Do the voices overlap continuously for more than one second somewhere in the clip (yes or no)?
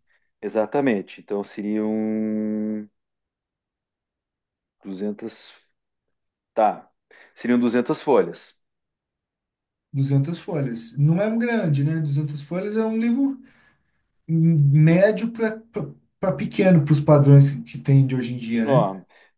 no